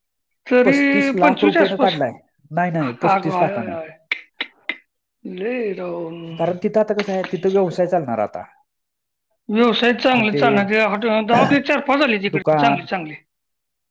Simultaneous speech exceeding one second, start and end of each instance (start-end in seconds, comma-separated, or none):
0.7-1.9